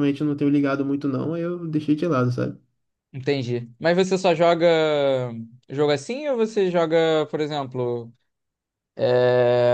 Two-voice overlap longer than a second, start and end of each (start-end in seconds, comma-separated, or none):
none